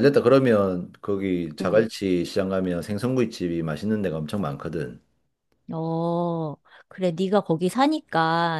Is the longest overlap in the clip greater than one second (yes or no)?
no